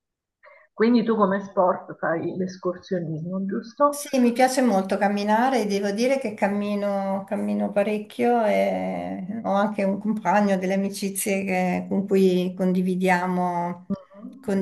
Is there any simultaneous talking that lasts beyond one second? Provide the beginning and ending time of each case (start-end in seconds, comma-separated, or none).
none